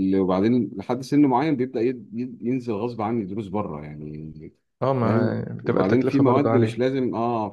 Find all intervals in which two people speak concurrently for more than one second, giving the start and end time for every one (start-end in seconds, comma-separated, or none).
5.0-6.8